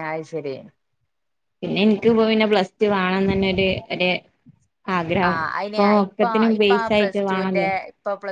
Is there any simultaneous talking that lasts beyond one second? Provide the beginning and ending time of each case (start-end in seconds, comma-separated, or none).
5.3-7.7